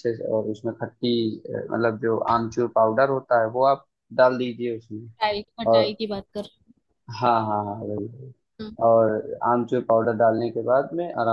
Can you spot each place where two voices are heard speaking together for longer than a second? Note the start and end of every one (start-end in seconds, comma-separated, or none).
none